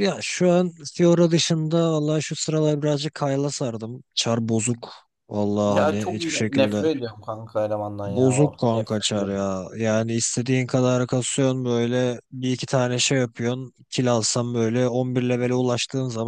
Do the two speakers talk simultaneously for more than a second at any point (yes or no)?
yes